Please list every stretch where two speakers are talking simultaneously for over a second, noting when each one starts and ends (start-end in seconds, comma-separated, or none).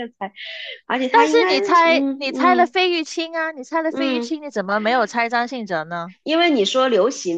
1.1-2.8